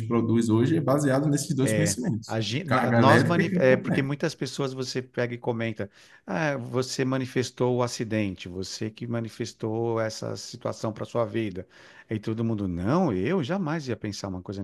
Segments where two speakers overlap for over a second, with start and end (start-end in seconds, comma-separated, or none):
1.6-4.1